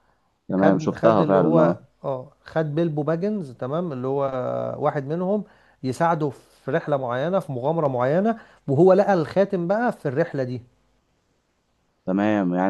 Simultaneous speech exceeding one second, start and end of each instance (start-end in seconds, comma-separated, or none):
0.5-1.8